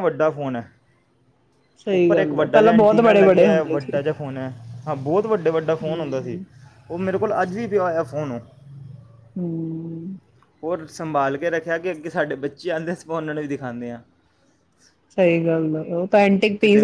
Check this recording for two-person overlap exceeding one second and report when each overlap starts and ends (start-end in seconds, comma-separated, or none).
1.9-4.0